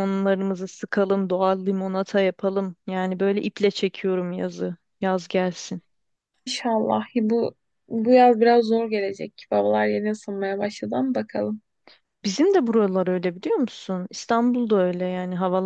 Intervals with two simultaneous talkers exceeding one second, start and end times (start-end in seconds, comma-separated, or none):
none